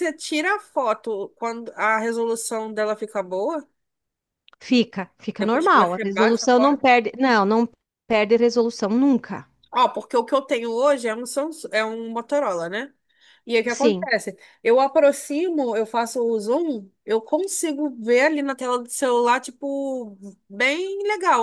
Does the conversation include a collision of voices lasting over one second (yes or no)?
yes